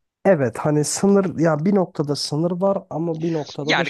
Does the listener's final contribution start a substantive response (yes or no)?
yes